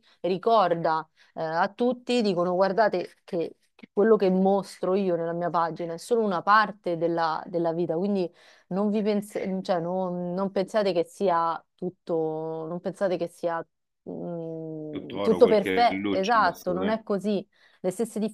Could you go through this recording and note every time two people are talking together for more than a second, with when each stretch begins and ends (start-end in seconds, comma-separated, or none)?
14.9-17.0